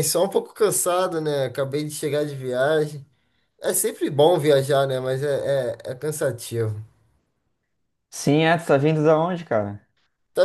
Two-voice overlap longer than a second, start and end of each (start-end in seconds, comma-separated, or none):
none